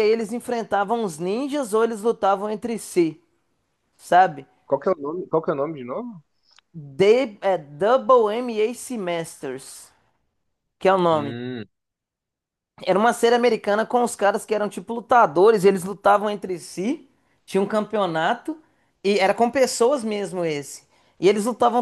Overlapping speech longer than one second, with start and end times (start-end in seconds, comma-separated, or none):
none